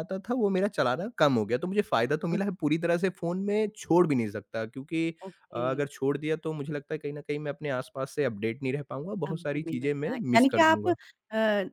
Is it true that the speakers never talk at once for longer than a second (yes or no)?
no